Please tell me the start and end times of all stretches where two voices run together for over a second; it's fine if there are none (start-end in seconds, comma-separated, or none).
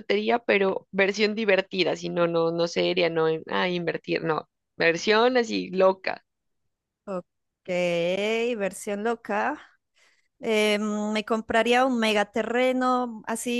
none